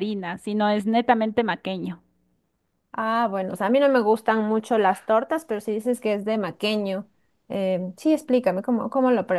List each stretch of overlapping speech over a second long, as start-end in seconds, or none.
none